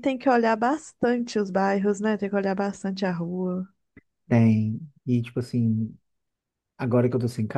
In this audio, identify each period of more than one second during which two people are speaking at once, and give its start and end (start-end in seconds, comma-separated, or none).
none